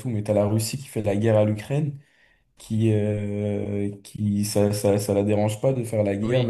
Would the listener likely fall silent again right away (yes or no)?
yes